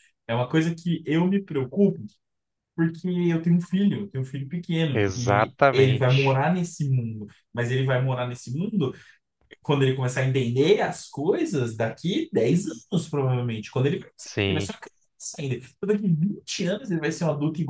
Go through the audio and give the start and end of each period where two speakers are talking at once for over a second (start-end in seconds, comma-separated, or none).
4.9-6.4